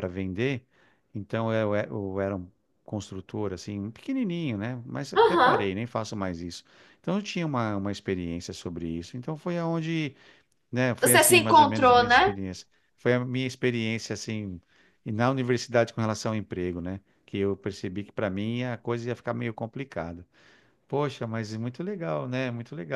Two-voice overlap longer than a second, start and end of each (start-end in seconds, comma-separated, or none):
11.0-12.3